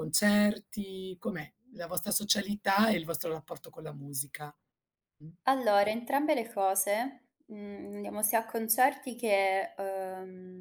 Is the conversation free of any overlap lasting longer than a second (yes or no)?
yes